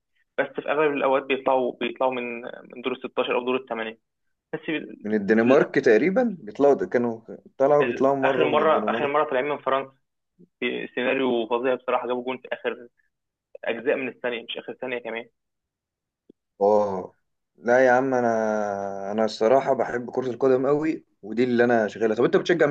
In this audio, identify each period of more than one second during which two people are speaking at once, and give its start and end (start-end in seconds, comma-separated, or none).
7.8-9.1